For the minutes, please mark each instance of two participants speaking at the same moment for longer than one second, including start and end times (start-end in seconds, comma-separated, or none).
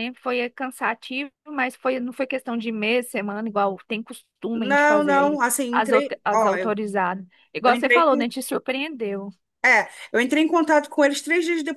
4.5-6.8